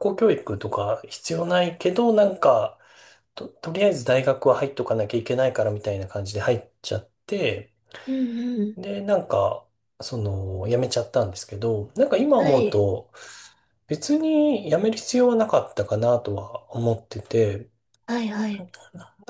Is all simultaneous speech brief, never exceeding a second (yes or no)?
yes